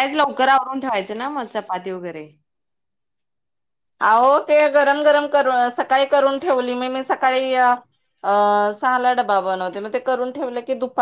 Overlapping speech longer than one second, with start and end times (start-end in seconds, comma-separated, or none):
none